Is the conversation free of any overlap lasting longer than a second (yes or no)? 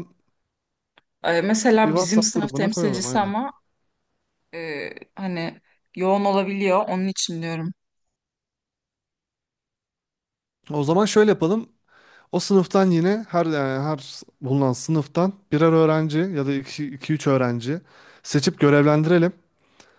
no